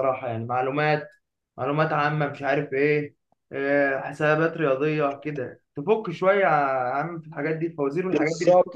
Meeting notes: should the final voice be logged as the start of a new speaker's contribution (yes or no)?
yes